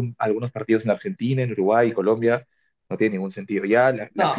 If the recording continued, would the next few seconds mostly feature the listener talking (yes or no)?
no